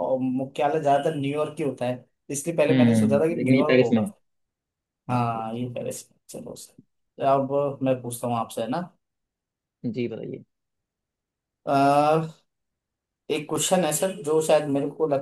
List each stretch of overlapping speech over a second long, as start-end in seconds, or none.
2.7-4.1